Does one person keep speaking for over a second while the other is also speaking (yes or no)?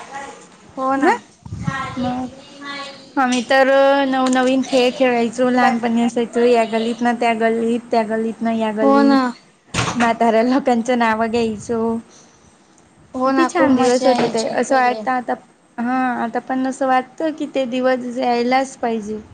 yes